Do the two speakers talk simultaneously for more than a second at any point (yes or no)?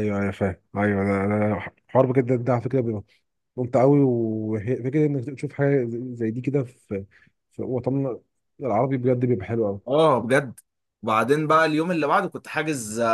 no